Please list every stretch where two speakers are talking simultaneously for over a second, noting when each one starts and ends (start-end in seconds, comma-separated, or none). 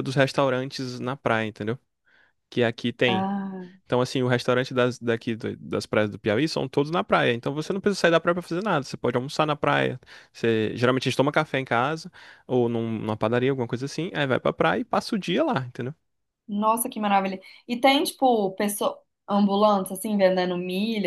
none